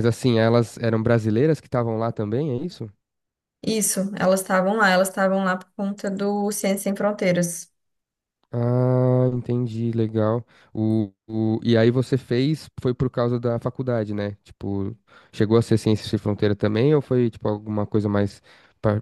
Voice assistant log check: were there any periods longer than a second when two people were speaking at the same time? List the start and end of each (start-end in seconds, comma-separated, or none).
none